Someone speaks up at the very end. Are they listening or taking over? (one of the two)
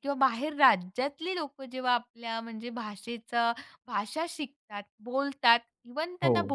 listening